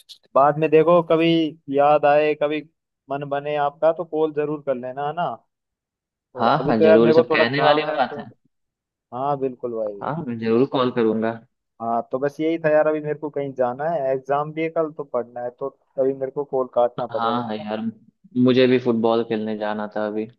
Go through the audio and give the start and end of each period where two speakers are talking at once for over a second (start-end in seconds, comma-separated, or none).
6.4-8.2